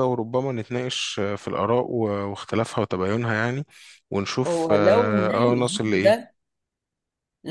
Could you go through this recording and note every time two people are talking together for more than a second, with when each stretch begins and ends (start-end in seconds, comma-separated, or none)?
4.5-6.3